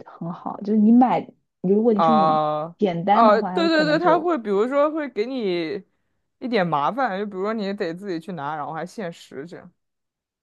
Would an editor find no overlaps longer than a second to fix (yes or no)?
no